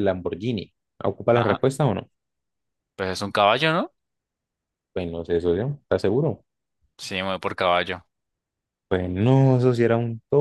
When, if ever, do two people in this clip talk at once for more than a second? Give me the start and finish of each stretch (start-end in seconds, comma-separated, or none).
none